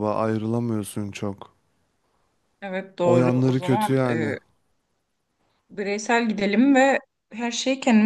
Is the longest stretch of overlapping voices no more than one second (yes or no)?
no